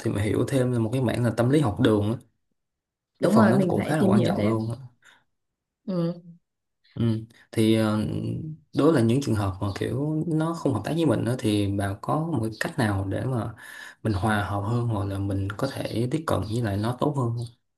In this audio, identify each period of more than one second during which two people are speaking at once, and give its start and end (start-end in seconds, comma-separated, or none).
3.2-4.7